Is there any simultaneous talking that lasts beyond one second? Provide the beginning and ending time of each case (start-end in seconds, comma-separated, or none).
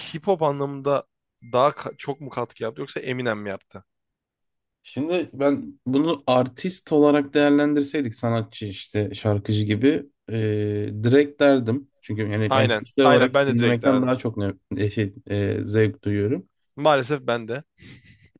12.5-14.2